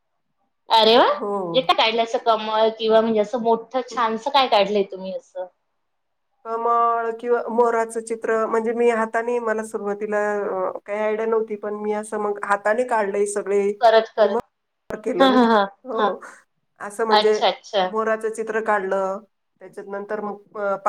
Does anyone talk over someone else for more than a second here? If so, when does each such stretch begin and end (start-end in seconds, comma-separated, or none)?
none